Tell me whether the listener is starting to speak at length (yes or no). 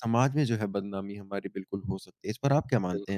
yes